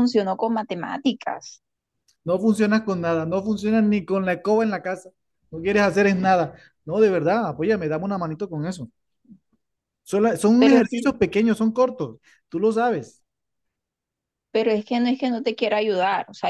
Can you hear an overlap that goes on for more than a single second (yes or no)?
no